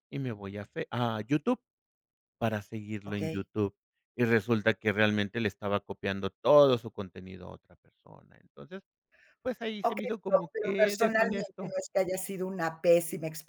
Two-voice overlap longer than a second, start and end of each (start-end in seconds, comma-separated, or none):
9.8-11.7